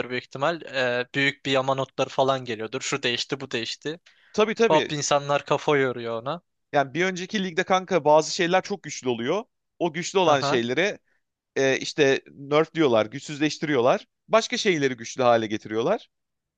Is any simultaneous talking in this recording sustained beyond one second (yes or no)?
no